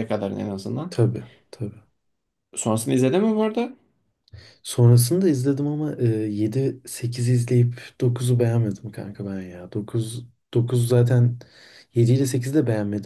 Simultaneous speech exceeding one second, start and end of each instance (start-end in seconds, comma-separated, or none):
none